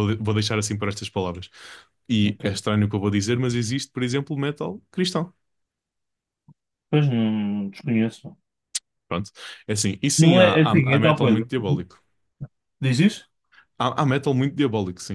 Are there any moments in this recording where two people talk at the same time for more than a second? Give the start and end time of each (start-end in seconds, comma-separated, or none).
10.2-11.4